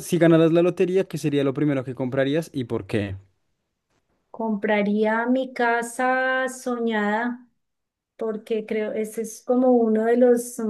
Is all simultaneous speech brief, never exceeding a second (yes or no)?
yes